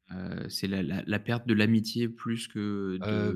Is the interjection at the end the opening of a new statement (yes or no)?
yes